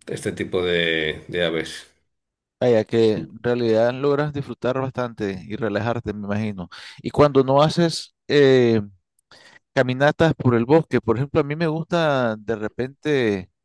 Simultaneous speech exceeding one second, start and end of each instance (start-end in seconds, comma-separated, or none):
none